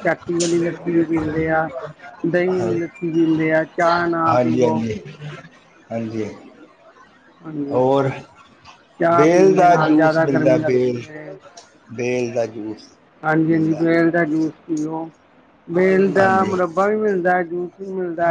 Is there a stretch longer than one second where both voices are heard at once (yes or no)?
yes